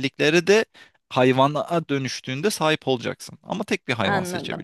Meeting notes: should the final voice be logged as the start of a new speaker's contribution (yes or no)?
yes